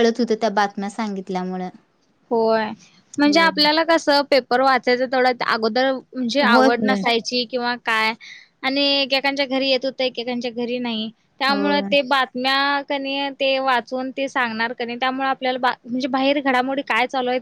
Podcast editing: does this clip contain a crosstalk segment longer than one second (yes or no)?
no